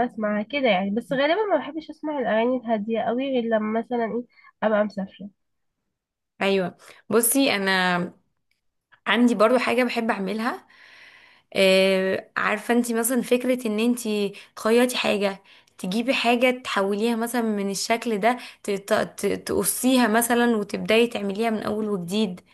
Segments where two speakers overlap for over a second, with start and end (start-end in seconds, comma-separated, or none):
none